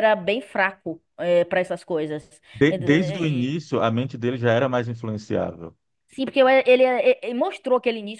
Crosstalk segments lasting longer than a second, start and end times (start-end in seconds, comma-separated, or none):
none